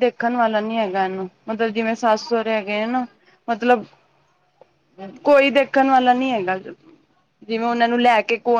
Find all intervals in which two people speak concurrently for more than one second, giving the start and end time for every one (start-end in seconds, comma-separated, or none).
1.6-3.1